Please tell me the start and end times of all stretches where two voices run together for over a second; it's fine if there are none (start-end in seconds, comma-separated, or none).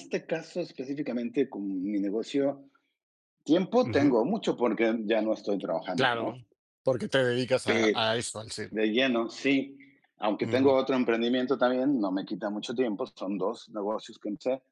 none